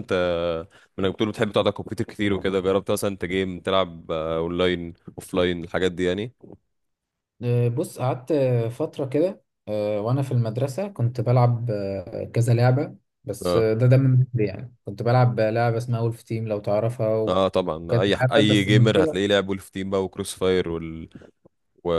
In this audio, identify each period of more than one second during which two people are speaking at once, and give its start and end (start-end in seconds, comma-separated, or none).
17.3-19.2